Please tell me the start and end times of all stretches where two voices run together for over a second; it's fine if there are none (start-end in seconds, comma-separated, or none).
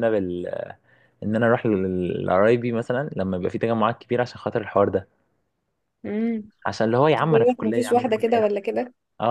7.2-8.5